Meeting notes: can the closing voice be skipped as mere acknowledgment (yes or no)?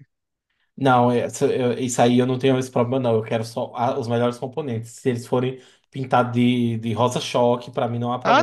no